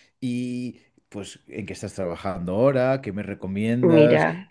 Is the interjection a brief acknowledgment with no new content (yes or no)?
yes